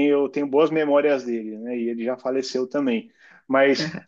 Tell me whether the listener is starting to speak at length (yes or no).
no